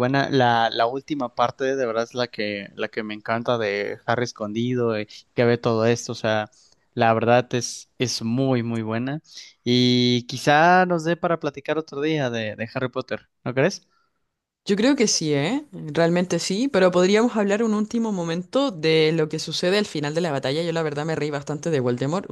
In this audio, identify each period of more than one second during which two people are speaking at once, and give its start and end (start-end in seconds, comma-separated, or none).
none